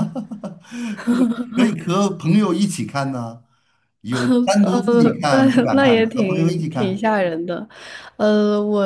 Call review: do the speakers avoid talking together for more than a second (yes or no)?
no